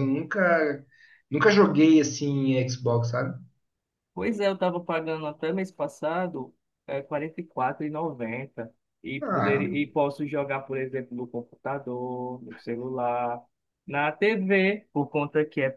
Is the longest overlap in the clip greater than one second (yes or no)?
no